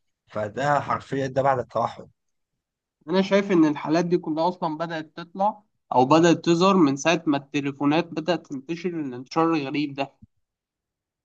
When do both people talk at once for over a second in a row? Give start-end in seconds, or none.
none